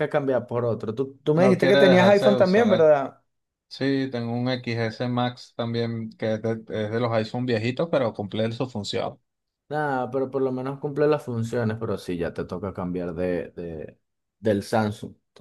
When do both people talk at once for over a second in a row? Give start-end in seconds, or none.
1.4-2.9